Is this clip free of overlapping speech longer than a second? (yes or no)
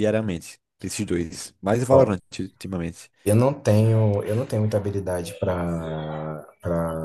yes